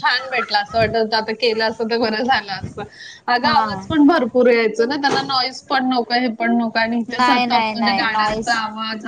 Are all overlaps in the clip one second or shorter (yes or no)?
no